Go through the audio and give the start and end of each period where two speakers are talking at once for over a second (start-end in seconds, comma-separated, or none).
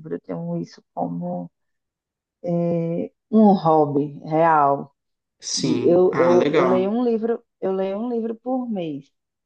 5.6-6.9